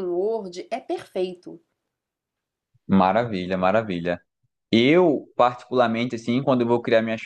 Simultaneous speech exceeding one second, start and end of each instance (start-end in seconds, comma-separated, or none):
none